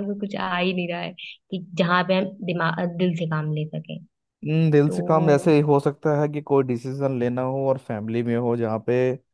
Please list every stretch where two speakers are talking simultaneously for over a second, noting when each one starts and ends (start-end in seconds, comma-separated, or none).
none